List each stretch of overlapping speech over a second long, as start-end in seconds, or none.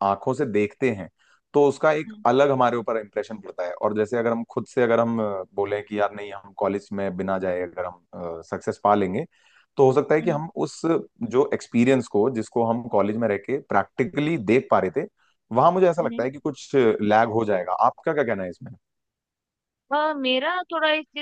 none